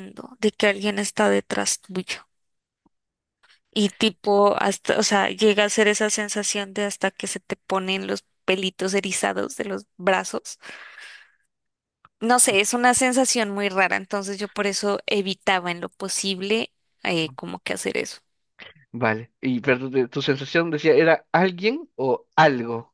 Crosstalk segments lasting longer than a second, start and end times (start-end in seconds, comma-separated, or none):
none